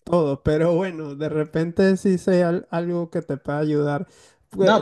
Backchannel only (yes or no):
yes